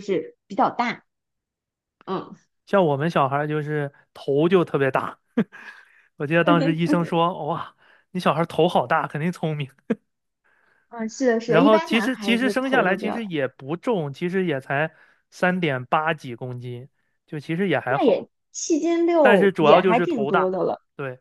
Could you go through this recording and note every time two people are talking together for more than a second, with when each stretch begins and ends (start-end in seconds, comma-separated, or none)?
11.4-13.2, 19.2-20.6